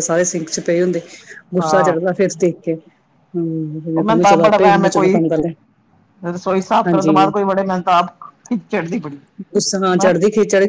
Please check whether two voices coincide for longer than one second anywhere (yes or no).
yes